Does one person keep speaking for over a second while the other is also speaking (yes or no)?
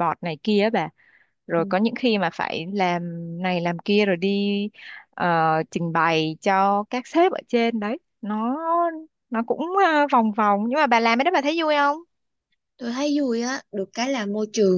no